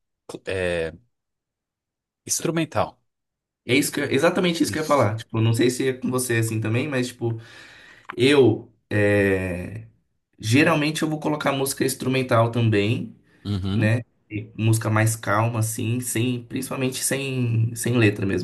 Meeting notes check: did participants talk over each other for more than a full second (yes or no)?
no